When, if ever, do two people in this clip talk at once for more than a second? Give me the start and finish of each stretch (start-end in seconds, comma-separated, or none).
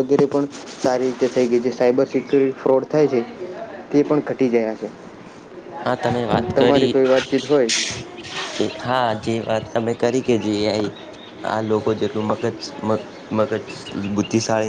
none